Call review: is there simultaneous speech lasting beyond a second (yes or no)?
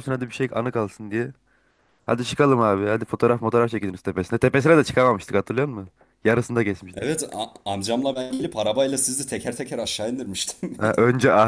no